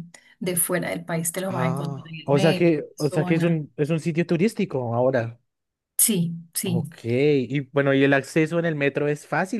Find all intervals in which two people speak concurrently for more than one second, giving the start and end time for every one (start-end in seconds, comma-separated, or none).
1.5-3.6